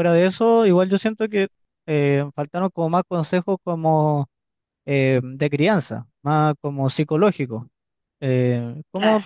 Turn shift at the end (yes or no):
no